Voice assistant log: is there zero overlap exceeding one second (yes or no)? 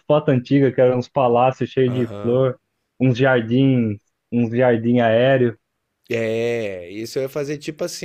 yes